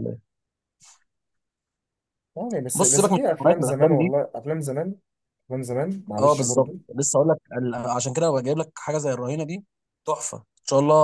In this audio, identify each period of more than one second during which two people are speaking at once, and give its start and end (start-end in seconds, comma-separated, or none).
2.7-4.1